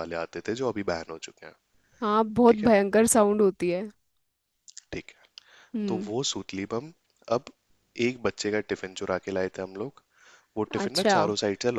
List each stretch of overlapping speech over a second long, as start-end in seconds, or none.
none